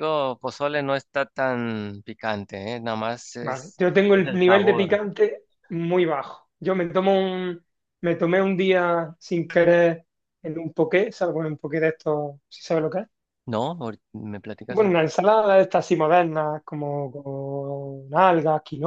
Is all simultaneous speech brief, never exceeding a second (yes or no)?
no